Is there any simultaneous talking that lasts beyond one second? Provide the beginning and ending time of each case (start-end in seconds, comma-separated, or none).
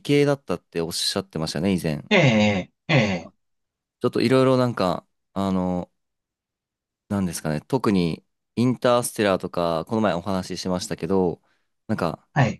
none